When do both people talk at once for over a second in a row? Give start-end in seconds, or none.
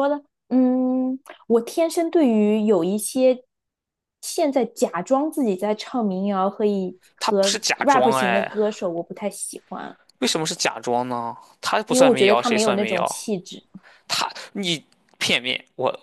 7.2-8.5, 11.9-13.2